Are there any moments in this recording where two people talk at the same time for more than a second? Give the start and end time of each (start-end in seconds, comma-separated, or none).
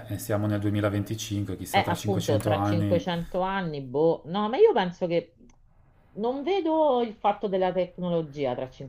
1.7-3.0